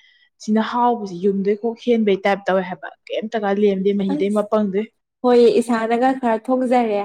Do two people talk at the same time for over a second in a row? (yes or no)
no